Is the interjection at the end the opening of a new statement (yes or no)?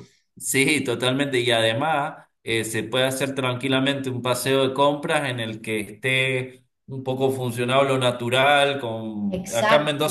no